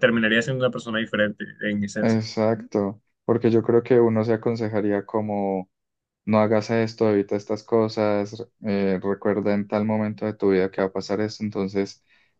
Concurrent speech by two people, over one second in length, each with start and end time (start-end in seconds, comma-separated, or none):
none